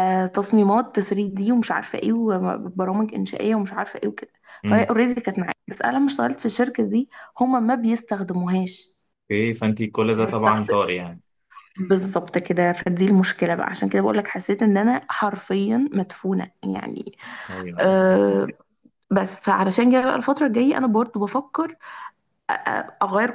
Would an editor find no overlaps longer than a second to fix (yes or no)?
yes